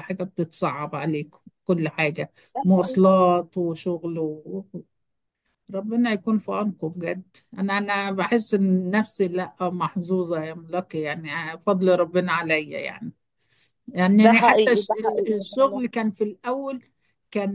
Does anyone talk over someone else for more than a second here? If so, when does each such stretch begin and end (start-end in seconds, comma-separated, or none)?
14.1-15.8